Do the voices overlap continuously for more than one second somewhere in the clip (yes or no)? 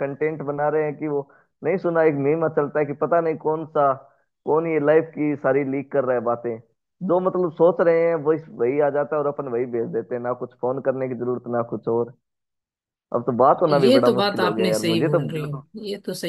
yes